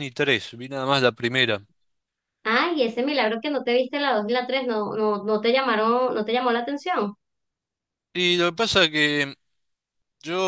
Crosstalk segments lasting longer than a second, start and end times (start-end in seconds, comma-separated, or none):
none